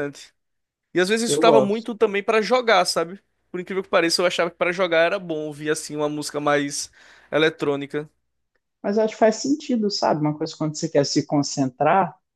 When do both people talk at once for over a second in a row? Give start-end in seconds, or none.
none